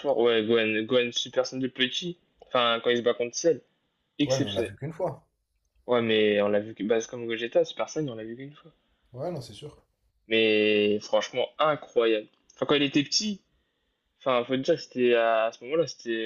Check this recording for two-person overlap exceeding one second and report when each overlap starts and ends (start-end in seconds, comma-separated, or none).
none